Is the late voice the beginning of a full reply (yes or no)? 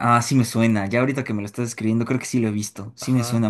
yes